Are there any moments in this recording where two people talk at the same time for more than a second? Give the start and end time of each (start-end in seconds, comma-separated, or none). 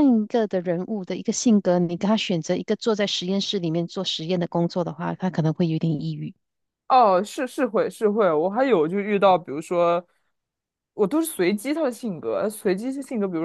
none